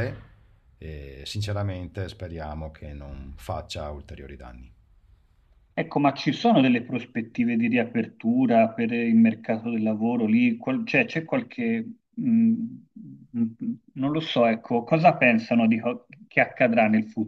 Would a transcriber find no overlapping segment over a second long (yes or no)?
yes